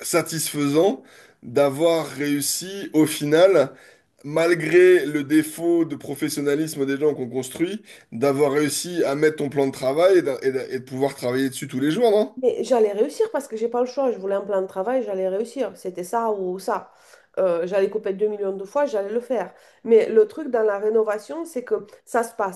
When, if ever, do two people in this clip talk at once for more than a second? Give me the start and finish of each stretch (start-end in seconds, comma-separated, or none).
none